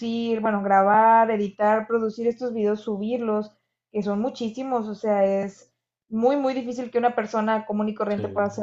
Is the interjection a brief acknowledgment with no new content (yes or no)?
yes